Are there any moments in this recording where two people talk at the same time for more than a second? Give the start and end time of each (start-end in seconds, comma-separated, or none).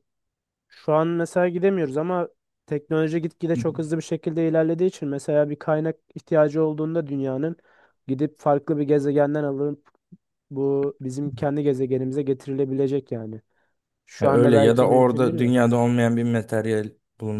14.2-15.5